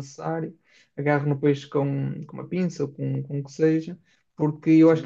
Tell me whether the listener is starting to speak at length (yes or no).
no